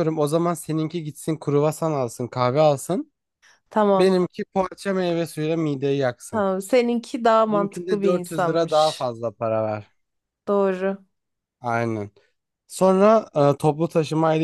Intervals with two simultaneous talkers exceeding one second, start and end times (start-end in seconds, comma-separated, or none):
7.5-9.1